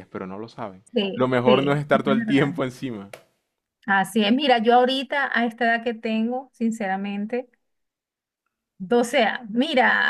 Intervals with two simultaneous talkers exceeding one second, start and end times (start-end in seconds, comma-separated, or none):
0.9-2.5